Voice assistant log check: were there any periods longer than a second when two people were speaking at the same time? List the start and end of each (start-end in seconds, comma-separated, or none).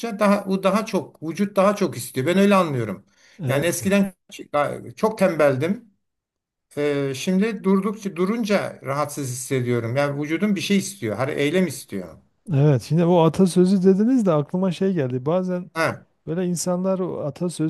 none